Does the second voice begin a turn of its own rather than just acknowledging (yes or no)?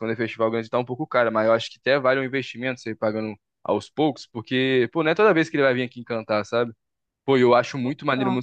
no